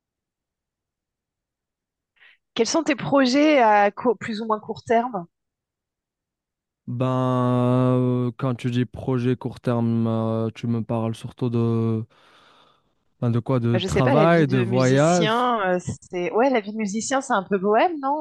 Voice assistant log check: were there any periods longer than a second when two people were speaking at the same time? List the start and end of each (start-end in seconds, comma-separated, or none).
13.7-15.5